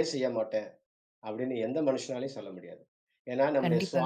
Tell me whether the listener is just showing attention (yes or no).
yes